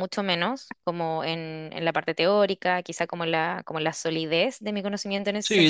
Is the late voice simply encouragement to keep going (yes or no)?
no